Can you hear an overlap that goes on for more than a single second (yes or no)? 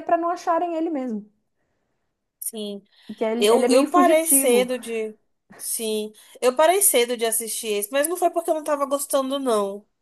yes